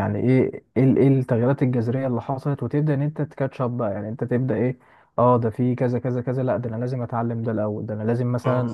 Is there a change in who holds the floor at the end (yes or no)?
no